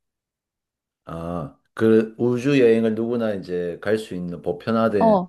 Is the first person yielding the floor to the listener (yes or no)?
yes